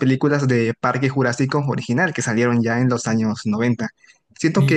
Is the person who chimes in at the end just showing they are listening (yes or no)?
yes